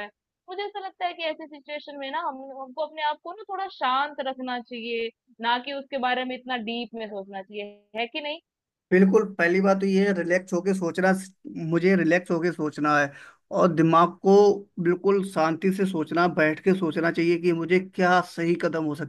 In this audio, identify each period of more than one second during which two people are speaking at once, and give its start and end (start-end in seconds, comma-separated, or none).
none